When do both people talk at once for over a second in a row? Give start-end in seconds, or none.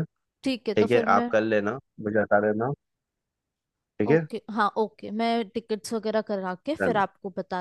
none